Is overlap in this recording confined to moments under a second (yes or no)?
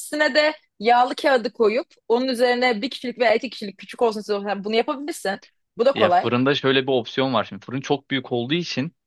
yes